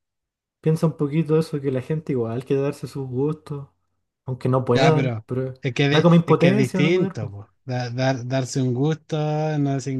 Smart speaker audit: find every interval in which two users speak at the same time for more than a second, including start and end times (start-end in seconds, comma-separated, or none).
5.9-7.3